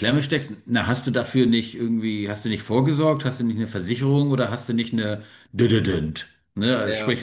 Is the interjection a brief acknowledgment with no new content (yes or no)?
yes